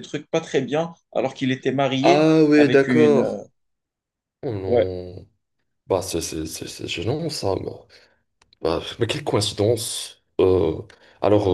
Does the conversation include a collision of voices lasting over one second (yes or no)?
yes